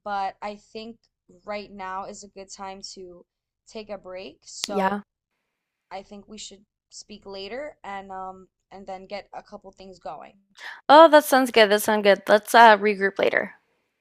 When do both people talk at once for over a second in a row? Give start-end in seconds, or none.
none